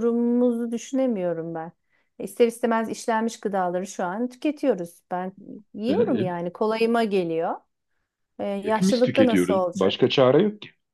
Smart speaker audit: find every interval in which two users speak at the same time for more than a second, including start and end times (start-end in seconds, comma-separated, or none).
8.6-10.1